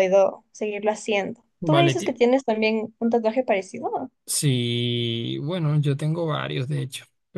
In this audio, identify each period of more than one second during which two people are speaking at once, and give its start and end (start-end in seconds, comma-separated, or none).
none